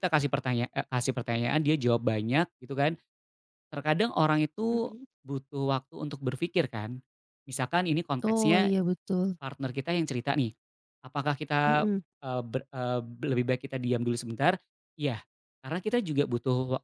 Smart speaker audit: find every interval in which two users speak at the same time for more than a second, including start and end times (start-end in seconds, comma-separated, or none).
none